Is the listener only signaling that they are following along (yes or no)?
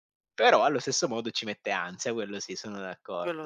no